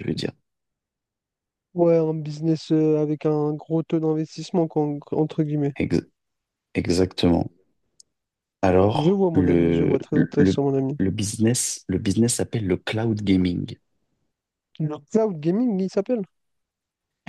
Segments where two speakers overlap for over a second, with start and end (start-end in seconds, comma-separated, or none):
8.9-10.6